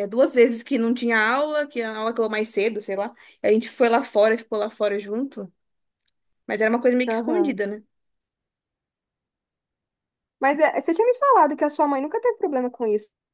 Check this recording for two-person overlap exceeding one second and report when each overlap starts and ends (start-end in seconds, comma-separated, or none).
none